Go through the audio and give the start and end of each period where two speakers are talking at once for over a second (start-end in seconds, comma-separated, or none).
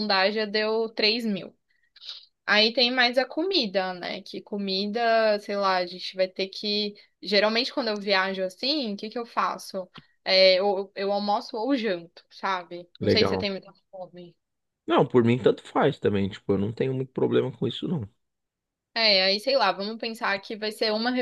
none